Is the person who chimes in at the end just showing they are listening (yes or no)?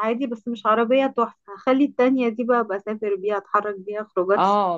no